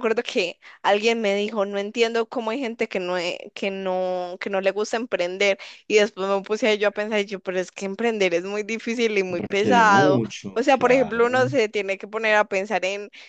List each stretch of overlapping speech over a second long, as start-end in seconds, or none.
9.4-11.4